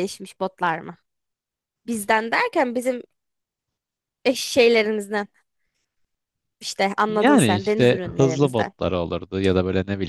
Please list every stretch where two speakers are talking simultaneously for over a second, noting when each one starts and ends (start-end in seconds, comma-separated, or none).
7.1-8.7